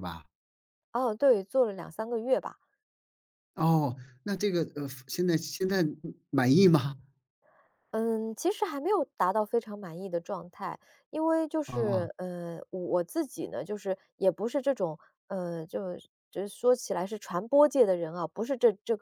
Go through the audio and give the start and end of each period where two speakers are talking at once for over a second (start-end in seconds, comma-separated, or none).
none